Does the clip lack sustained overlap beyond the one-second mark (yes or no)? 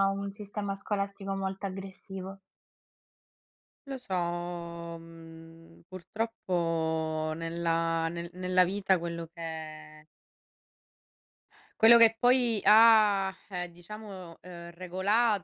yes